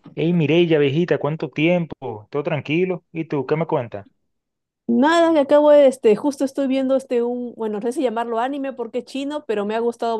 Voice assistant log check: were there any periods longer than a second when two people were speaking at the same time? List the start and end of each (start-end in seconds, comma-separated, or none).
none